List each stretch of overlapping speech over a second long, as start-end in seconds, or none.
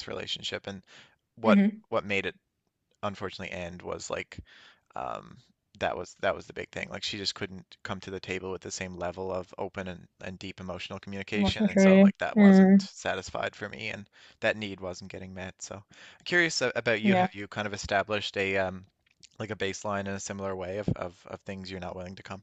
11.3-12.9